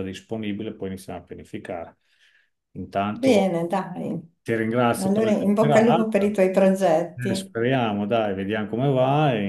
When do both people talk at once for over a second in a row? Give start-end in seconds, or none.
5.0-6.4